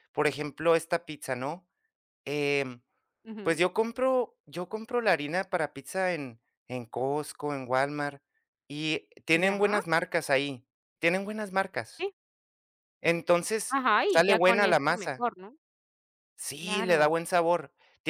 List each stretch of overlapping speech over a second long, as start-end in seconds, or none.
13.7-15.2